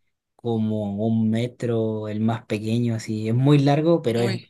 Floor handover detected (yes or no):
no